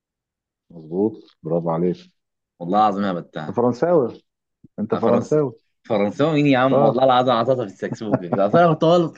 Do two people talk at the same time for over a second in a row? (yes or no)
no